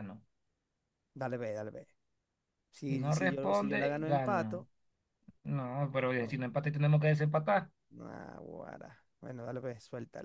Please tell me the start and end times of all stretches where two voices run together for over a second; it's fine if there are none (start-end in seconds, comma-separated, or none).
2.9-4.7